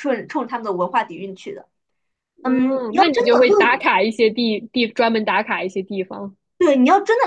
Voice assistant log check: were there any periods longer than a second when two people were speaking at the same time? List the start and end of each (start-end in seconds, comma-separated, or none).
2.4-3.8